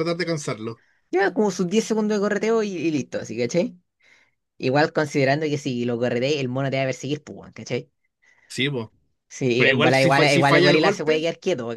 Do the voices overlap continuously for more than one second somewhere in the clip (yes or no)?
yes